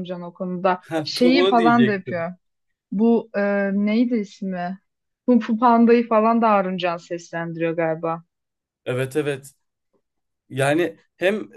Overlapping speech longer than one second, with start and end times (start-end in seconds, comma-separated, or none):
0.8-2.3